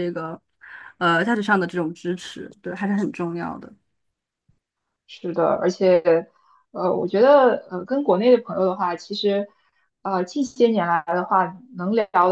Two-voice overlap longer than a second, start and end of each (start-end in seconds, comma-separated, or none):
none